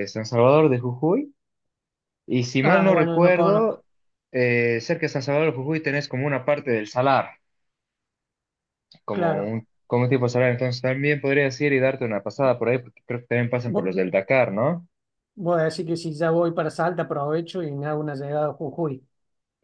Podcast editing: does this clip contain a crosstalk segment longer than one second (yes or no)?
yes